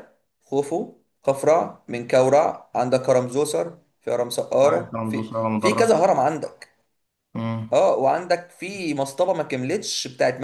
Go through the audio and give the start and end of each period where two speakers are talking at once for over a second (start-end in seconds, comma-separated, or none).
4.6-6.0